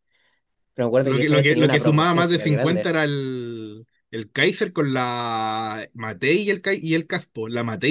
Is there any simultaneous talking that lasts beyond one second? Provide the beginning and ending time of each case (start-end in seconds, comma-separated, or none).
1.0-2.9